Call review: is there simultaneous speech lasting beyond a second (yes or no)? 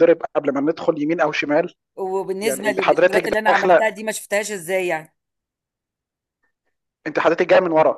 yes